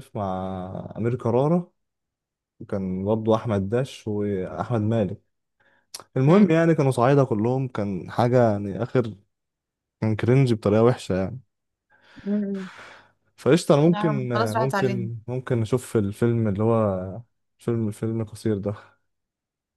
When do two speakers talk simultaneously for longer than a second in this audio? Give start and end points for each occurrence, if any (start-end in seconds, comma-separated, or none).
13.9-15.1